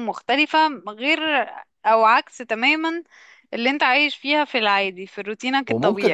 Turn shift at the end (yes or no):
yes